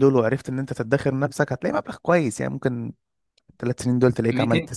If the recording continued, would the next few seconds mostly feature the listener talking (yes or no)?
no